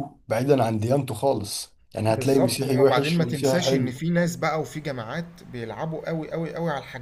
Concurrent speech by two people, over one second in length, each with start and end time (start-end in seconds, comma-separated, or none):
2.1-3.9